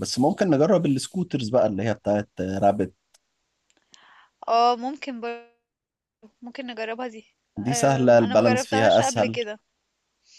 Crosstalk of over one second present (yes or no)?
yes